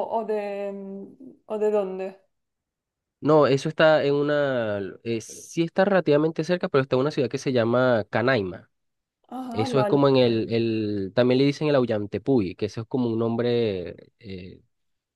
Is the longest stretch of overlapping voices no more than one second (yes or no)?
yes